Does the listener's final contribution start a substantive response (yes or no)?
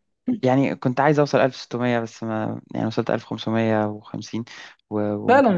yes